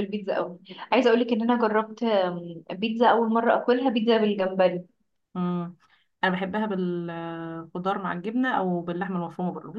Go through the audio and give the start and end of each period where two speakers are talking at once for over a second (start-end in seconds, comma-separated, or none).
none